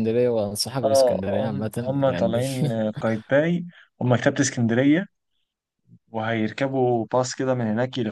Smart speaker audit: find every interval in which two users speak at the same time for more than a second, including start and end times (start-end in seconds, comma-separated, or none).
0.8-2.4